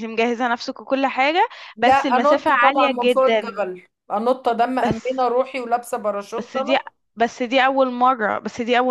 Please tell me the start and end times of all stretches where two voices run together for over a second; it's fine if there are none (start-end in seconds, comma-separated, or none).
1.8-3.6